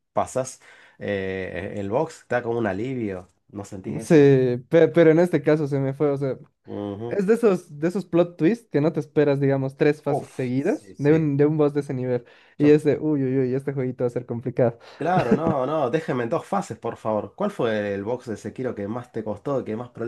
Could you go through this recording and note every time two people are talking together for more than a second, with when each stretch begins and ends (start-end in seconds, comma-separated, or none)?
10.0-11.3